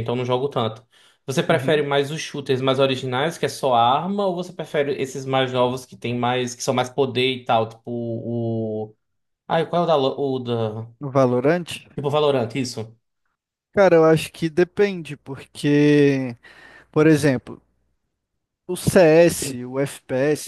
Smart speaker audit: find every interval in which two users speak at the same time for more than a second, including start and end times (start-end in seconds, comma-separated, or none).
none